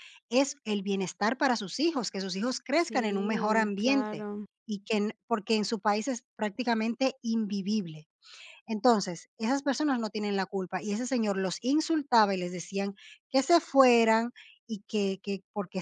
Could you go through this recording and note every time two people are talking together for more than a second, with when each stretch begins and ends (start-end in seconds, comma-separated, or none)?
2.7-4.3